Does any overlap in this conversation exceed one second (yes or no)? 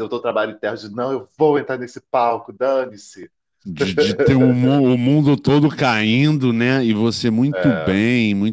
no